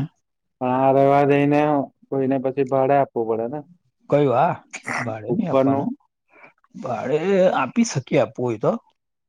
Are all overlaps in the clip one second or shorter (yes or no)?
yes